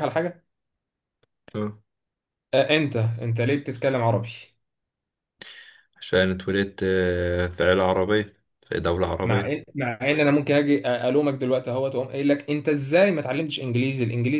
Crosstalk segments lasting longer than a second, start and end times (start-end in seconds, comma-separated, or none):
none